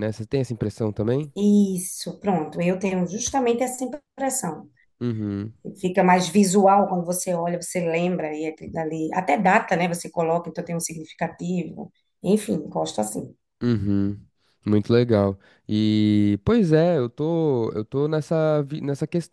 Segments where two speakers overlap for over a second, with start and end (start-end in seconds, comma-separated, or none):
none